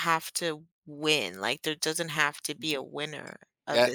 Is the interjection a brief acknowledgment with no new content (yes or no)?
no